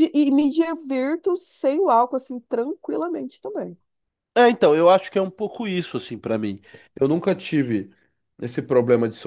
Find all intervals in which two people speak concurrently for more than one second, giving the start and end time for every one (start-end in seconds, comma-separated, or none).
none